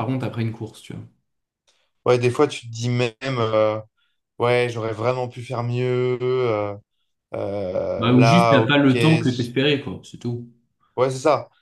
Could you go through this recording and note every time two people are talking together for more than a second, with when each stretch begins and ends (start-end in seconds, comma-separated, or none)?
8.0-9.6